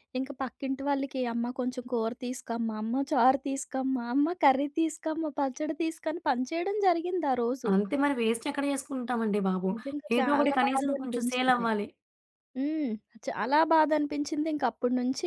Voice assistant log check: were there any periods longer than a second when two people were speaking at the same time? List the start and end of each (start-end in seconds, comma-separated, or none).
10.2-11.6